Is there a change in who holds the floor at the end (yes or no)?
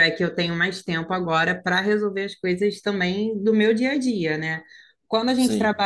no